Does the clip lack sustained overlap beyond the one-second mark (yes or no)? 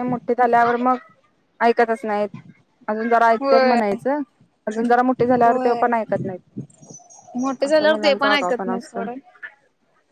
no